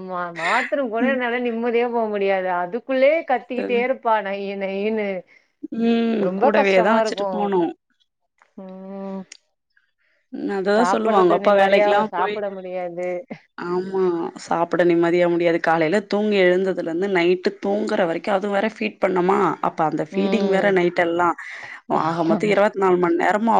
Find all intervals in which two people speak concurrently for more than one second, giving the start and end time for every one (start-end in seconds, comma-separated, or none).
10.8-12.3